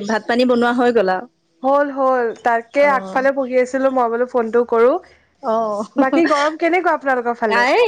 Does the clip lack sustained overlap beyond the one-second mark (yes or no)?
yes